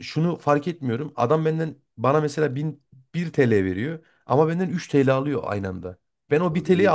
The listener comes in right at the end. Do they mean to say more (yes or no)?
no